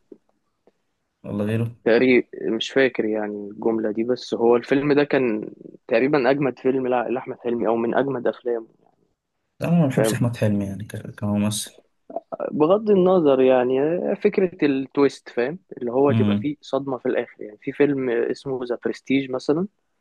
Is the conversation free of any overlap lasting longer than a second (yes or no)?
yes